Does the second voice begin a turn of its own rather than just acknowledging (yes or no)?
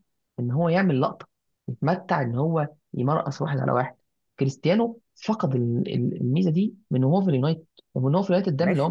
no